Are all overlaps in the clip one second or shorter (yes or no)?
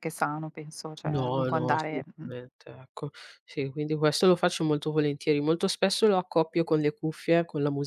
no